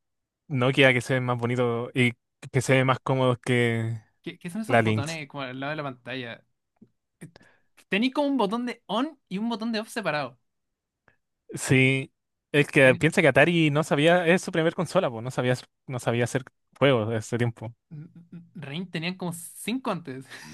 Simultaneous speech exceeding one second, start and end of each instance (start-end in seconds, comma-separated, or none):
none